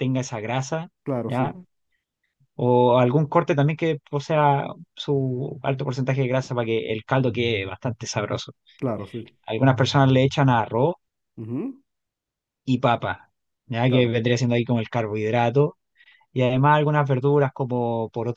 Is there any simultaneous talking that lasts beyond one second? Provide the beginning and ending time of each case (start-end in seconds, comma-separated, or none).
none